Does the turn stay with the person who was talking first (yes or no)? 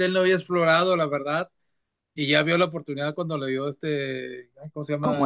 no